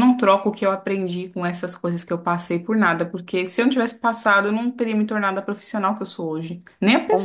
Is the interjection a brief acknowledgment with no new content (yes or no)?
no